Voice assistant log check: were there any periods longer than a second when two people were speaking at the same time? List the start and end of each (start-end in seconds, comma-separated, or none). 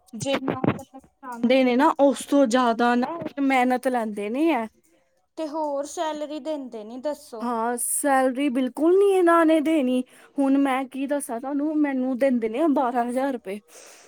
none